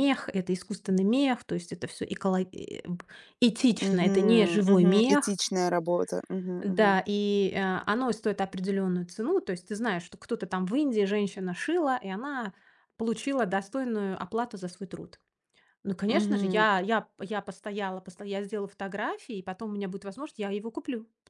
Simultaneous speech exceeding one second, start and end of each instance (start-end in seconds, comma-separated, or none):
3.8-5.4